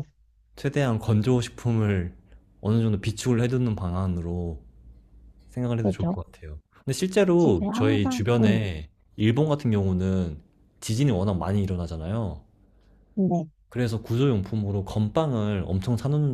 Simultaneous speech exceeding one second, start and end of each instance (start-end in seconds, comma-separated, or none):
7.4-8.6